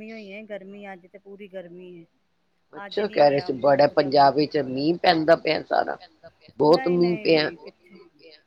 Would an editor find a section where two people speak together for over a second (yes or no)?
yes